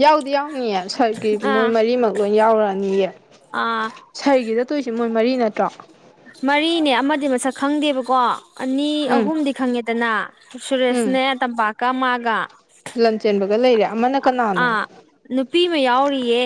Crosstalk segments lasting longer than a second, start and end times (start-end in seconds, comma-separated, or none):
none